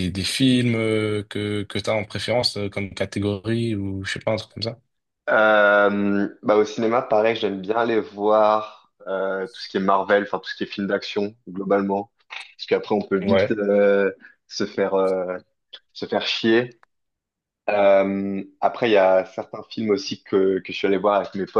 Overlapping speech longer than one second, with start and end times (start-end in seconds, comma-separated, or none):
none